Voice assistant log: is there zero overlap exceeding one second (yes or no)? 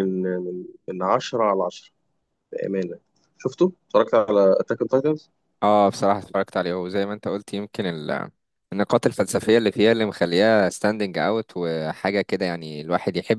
yes